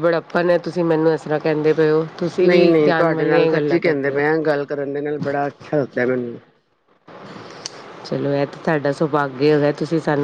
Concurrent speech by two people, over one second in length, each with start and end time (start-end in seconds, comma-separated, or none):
2.5-4.2